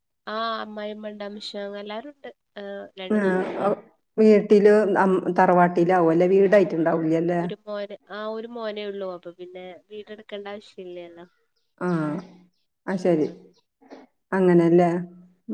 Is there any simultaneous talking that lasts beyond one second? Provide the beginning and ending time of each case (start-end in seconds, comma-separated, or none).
none